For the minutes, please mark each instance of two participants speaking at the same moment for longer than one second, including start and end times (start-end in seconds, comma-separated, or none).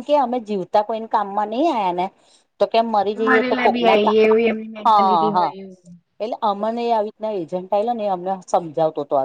3.3-5.4